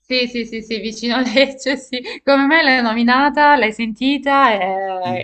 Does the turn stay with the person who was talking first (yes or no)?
no